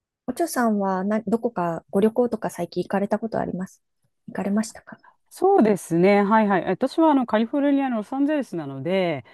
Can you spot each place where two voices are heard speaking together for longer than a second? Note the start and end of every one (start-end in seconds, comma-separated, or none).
none